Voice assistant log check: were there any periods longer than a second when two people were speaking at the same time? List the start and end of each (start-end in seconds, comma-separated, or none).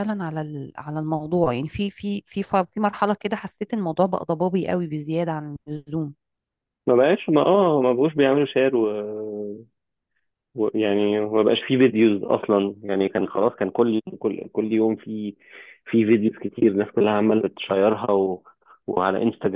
none